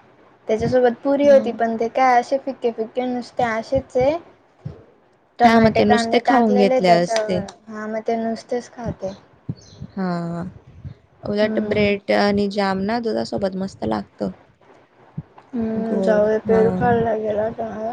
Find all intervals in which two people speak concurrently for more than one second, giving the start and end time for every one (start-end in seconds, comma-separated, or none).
5.4-7.4